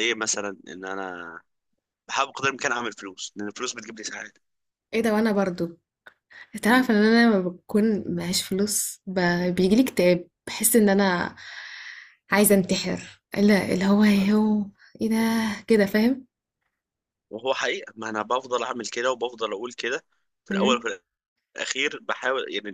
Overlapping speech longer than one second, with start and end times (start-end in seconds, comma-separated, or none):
none